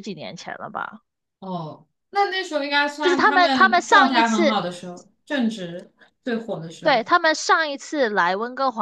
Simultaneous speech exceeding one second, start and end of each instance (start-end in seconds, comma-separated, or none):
3.0-4.6